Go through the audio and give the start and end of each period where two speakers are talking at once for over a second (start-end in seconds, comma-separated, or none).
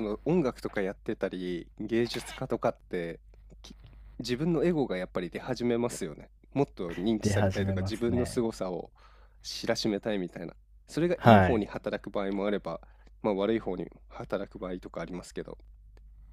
7.2-8.4